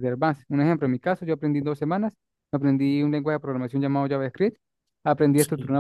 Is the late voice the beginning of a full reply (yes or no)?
no